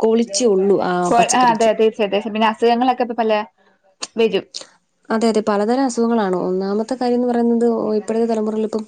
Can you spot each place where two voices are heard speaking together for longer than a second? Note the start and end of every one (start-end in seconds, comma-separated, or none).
none